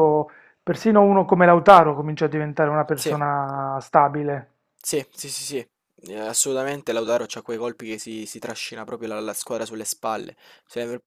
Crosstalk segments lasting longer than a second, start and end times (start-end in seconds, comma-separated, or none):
none